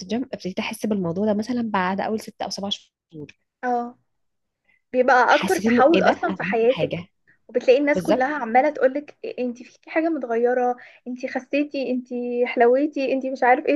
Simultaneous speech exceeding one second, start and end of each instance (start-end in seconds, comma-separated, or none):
5.3-7.0